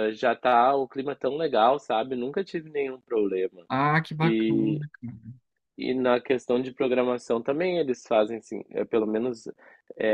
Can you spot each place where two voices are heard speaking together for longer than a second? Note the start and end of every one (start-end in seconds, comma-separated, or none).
none